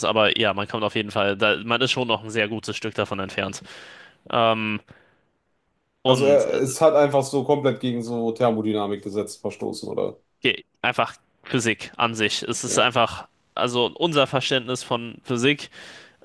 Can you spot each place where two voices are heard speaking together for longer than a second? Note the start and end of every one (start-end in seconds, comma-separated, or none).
none